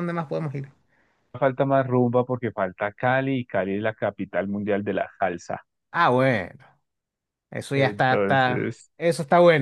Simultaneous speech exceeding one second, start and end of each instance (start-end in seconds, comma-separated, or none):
7.7-8.9